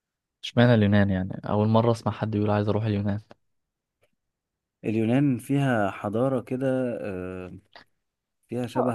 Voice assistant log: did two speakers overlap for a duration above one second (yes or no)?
no